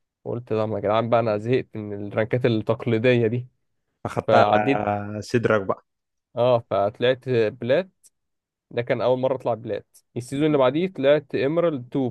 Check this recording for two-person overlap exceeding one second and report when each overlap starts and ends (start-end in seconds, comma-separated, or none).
none